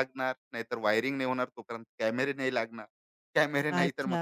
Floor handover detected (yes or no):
yes